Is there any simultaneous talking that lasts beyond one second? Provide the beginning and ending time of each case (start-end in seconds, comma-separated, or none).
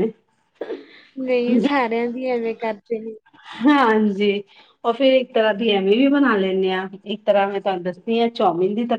none